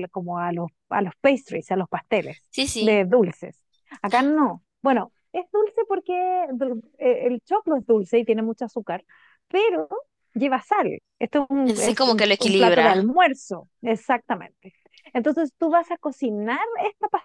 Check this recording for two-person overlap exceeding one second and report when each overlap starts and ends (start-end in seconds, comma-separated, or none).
11.6-13.1